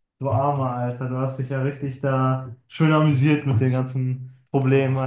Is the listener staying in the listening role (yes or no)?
no